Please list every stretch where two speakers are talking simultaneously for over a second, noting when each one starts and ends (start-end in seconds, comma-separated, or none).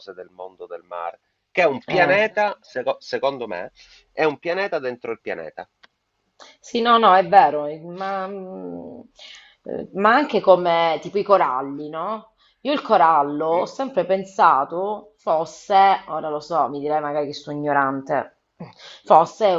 none